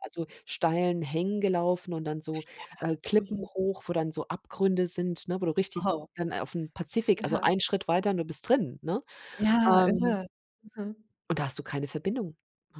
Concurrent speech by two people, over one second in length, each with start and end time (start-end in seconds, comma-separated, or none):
none